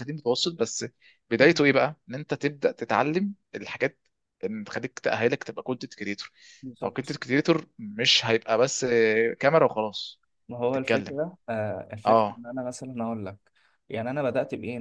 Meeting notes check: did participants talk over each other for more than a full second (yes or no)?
no